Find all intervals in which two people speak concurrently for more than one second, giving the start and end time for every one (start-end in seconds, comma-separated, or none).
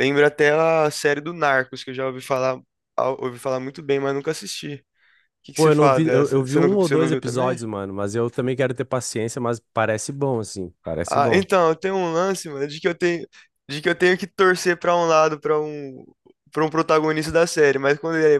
5.5-7.6